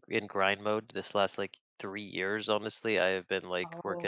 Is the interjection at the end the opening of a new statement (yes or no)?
no